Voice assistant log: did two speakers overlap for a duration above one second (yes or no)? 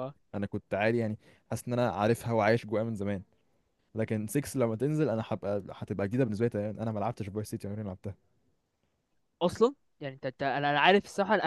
no